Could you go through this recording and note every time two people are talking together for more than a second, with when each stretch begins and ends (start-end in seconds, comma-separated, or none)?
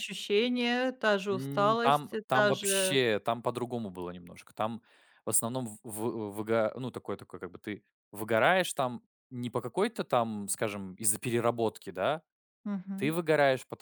1.3-3.0